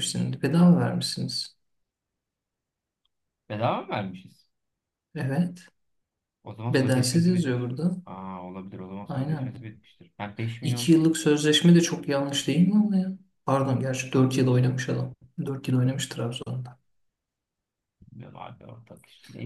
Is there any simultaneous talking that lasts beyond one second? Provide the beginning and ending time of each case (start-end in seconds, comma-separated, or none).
6.7-8.0